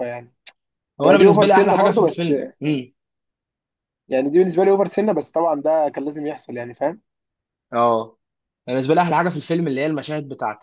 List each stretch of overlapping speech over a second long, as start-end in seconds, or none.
1.0-2.3